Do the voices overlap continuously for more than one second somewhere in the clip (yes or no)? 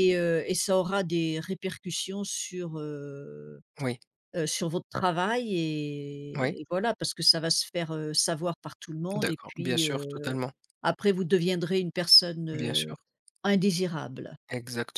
yes